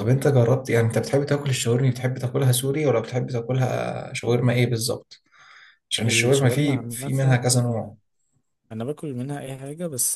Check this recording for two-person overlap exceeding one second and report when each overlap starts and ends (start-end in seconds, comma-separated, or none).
6.1-7.4